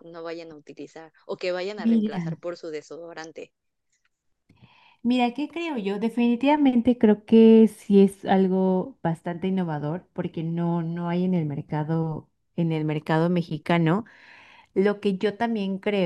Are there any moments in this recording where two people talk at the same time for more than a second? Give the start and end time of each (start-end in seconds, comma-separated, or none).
none